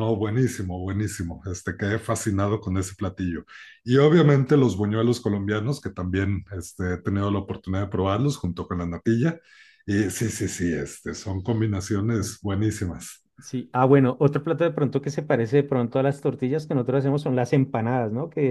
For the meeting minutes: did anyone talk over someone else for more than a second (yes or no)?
no